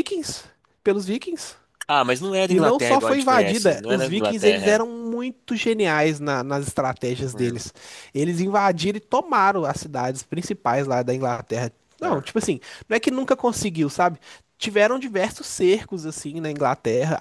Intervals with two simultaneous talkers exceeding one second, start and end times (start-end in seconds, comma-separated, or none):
2.5-4.8